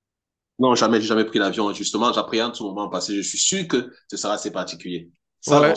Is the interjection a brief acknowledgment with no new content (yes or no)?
no